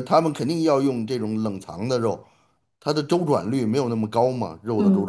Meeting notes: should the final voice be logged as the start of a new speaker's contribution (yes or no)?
yes